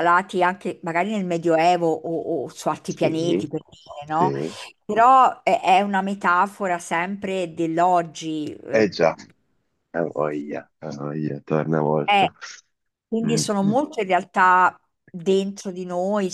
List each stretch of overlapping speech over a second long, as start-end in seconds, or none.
none